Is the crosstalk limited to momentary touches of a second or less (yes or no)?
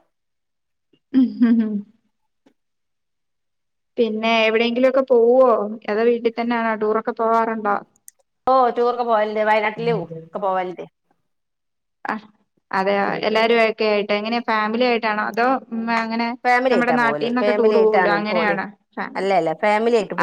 no